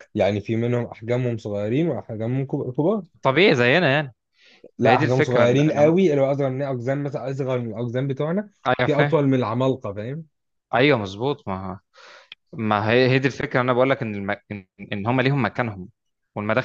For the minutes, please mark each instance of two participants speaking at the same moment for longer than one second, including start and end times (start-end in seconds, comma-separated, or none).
4.8-6.0